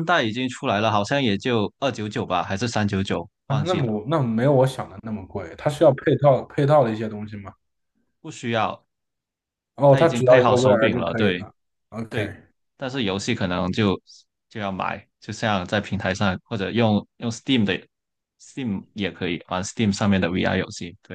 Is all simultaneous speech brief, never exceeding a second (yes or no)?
no